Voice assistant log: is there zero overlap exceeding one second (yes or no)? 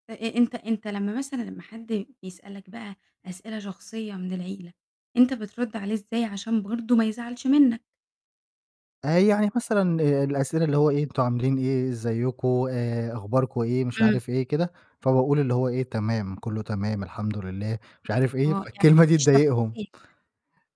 no